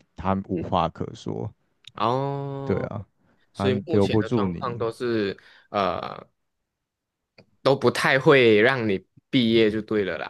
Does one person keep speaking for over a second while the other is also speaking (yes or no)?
yes